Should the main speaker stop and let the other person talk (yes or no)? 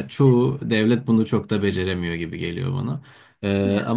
no